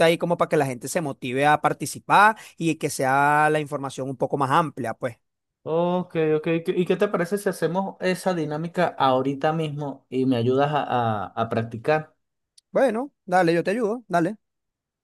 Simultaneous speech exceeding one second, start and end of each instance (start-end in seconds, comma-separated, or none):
none